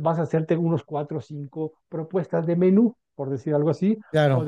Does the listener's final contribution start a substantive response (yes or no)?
no